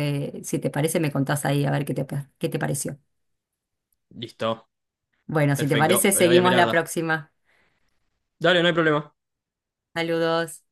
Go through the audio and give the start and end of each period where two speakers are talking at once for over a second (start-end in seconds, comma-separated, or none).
5.5-6.9